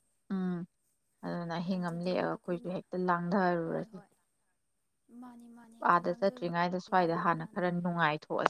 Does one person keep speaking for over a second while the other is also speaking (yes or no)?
yes